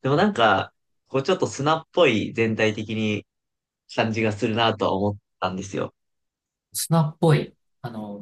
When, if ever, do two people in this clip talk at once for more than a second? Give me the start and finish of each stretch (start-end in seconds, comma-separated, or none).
none